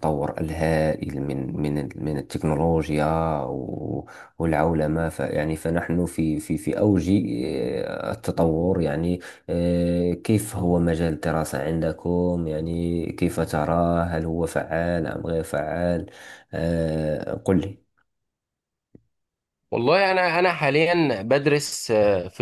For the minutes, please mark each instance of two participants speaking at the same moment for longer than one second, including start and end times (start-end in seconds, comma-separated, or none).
none